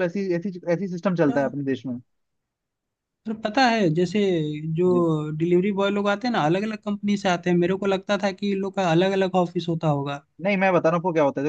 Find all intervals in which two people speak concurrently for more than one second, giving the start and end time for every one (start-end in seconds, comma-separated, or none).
none